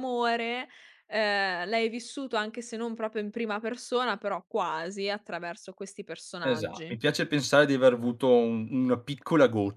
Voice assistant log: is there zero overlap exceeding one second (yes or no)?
yes